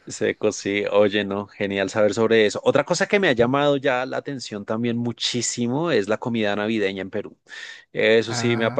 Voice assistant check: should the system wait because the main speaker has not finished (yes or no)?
yes